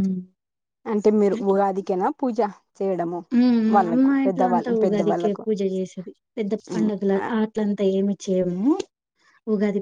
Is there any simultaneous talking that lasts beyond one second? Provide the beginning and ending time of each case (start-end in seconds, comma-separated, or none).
3.9-5.5